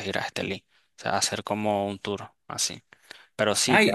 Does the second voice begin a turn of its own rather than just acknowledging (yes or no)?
yes